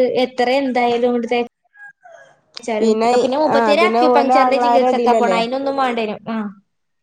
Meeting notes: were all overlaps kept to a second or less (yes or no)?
no